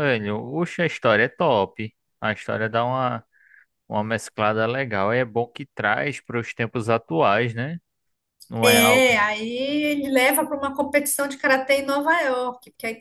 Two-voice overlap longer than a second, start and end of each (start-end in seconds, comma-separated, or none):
none